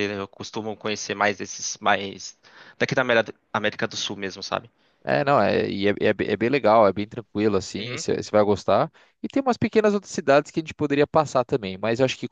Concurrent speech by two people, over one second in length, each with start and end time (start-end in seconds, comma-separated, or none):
none